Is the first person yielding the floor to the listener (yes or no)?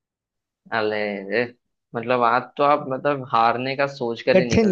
no